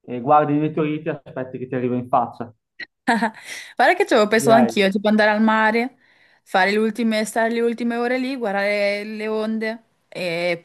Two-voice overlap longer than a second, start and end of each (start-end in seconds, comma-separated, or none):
none